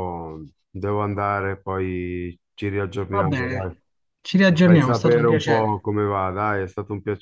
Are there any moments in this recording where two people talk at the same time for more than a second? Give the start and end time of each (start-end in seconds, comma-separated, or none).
4.5-5.9